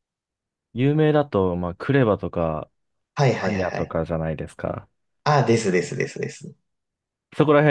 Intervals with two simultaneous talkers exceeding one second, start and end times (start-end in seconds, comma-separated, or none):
none